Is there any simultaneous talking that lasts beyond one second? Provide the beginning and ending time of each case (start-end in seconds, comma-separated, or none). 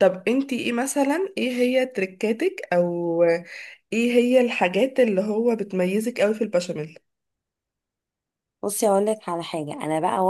none